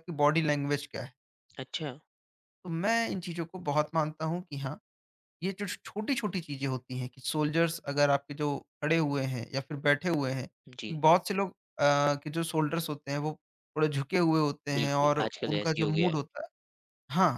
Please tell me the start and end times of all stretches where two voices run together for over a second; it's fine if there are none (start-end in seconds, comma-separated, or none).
14.8-16.2